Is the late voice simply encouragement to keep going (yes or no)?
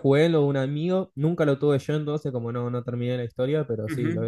no